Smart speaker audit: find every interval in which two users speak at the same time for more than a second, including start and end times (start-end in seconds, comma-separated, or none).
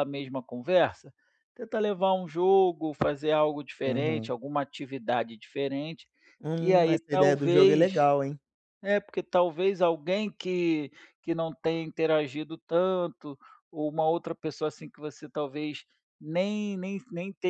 6.5-8.0